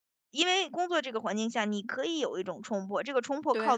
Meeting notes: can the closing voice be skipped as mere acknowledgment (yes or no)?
yes